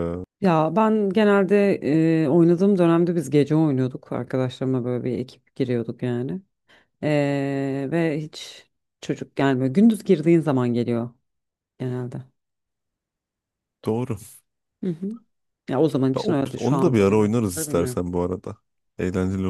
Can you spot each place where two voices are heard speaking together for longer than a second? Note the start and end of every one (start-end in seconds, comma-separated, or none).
16.1-18.0